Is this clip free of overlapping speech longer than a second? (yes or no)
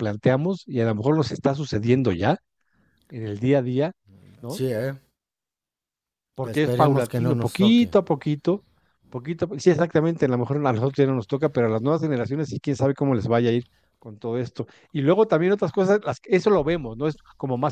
no